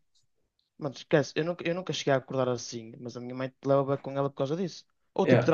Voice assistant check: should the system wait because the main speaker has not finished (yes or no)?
yes